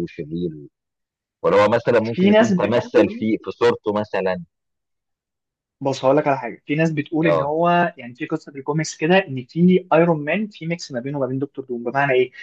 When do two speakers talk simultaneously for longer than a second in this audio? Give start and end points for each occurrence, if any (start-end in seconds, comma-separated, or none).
2.0-3.3